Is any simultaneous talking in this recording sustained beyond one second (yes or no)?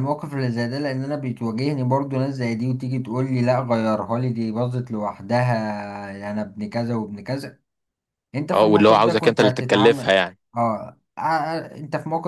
yes